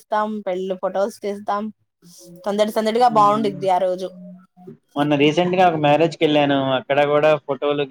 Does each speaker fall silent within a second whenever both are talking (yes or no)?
yes